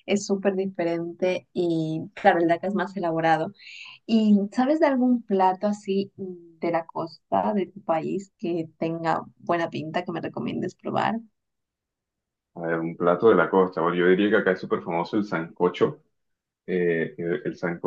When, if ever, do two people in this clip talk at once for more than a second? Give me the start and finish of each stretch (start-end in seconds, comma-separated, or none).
none